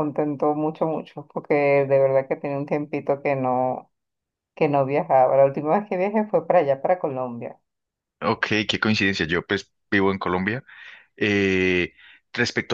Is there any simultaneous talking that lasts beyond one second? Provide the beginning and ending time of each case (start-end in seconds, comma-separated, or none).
none